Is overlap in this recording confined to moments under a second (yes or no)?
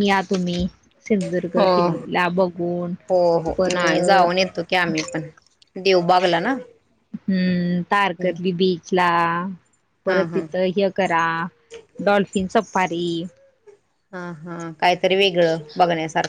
no